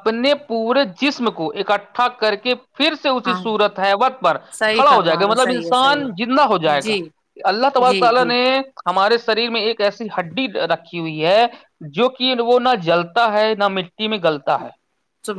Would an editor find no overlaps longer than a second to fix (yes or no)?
no